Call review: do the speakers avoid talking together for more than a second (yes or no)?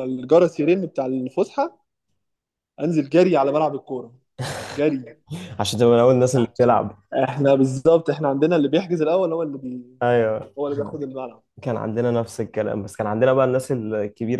yes